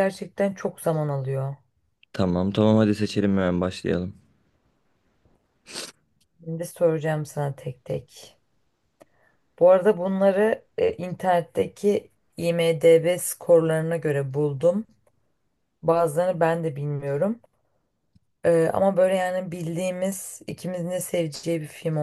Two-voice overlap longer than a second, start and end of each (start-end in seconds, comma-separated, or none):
none